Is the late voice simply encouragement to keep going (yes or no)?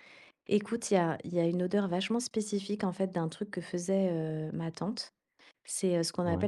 yes